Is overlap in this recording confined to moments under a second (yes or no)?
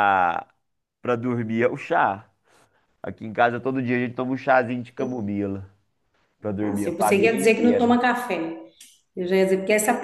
no